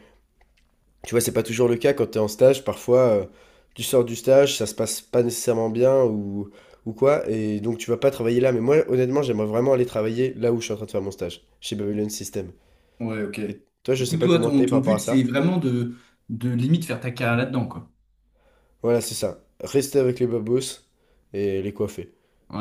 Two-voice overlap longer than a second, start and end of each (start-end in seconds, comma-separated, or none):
14.0-15.3